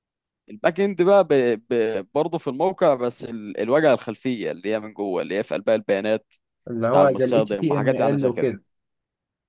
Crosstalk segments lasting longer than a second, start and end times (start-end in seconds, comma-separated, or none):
6.9-8.6